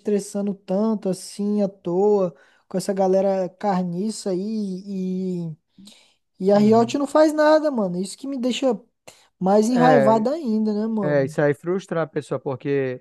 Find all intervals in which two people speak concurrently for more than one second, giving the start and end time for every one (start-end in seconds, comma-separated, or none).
none